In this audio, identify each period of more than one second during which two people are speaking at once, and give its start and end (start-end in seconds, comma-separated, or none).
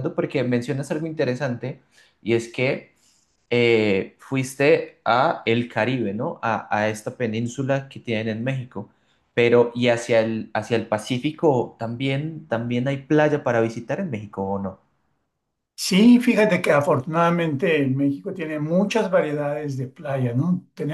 none